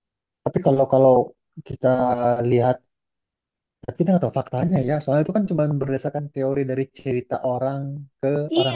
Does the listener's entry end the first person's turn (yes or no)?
yes